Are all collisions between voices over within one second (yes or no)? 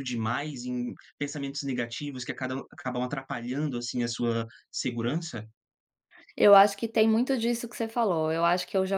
yes